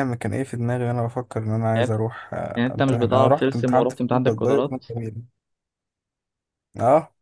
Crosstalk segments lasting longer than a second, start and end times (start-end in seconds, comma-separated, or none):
2.6-4.8